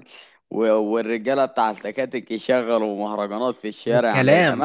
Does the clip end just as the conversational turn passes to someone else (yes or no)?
yes